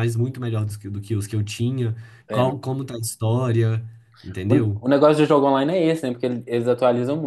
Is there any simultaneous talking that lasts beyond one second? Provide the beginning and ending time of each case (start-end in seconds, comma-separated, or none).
none